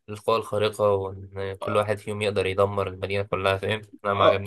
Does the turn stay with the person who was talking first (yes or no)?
no